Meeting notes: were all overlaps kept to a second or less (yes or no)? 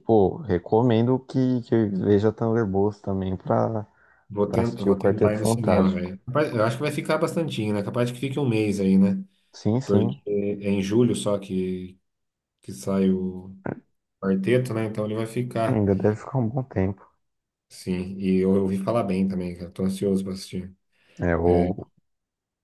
no